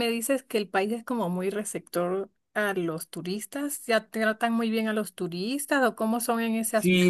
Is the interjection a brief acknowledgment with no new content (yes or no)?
no